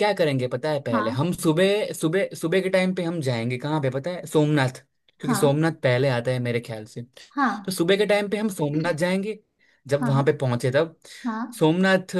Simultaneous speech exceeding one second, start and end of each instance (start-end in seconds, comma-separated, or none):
none